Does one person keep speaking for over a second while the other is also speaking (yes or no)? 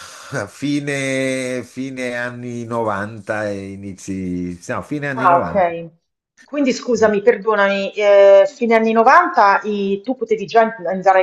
no